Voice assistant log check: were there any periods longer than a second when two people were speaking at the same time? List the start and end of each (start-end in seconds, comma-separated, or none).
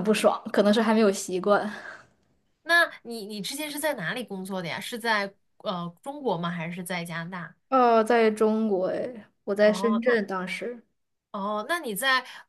none